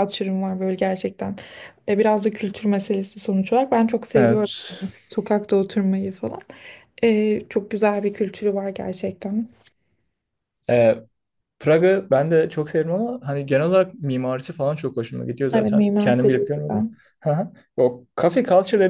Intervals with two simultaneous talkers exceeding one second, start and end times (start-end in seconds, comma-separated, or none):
15.5-16.8